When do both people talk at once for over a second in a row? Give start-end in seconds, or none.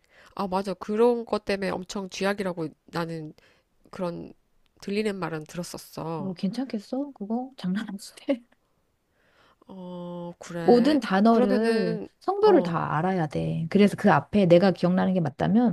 10.6-12.8